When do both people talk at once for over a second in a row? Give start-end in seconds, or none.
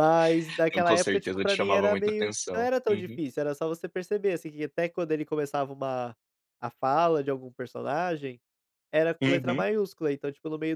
0.7-3.2